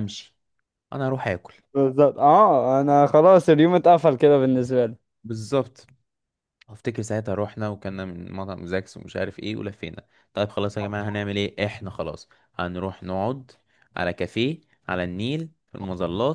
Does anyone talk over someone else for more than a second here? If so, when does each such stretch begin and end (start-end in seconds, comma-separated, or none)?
none